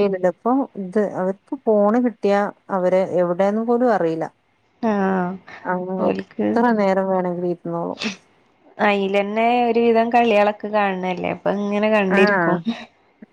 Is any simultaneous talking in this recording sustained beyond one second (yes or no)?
no